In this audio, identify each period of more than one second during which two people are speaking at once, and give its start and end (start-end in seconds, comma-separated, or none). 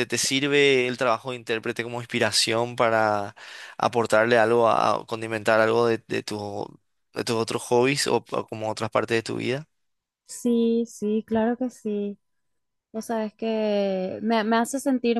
none